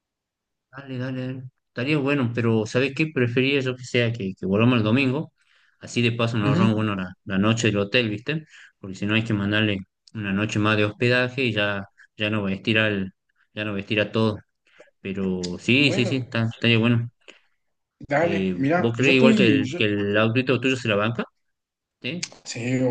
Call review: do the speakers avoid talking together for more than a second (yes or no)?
no